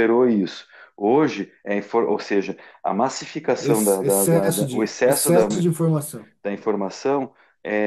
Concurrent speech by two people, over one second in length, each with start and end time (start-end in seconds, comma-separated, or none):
3.6-5.5